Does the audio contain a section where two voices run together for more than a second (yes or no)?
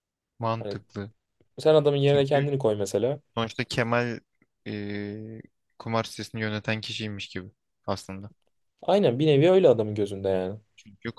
no